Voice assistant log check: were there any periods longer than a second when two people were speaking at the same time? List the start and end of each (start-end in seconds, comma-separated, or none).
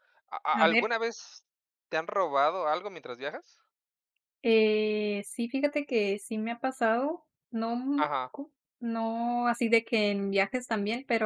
none